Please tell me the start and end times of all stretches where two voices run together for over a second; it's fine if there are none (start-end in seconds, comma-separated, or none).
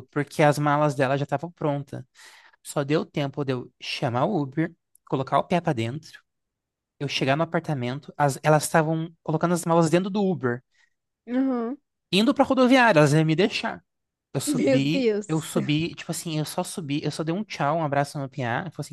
14.5-15.7